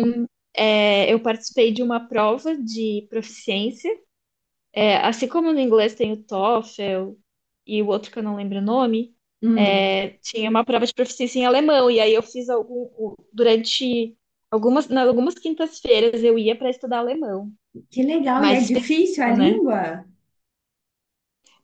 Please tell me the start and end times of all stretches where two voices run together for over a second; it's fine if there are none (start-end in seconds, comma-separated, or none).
18.3-19.6